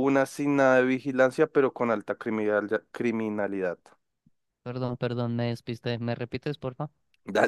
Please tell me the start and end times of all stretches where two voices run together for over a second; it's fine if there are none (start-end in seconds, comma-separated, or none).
none